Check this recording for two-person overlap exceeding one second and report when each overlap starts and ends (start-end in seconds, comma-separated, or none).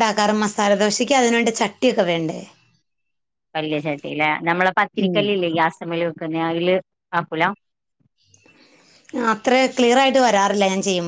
none